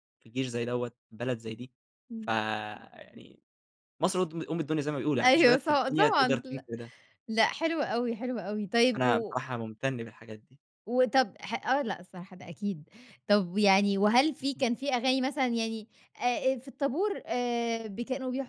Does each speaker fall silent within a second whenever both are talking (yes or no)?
no